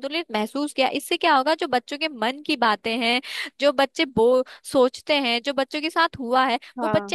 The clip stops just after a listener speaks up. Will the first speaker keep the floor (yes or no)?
yes